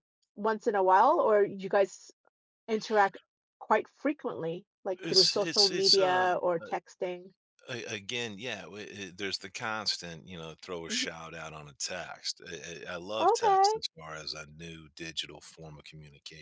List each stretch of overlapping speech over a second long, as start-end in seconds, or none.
5.0-6.8